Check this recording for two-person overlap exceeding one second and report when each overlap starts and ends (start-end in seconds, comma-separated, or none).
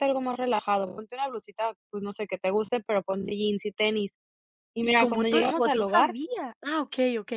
4.8-6.1